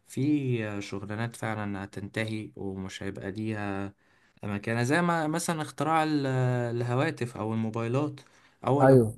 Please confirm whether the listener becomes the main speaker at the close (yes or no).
no